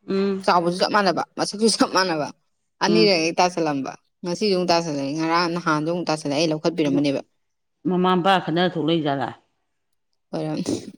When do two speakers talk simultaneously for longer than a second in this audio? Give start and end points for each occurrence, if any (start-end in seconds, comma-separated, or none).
none